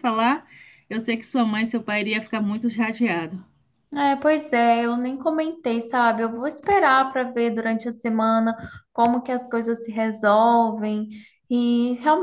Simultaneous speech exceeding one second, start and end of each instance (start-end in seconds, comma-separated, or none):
none